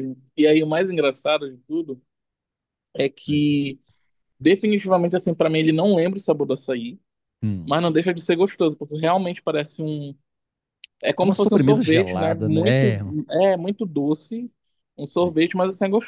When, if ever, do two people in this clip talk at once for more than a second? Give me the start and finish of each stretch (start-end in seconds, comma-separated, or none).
11.2-13.1